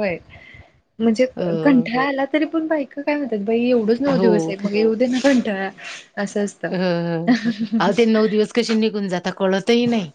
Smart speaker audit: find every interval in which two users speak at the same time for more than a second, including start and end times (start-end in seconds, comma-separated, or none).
none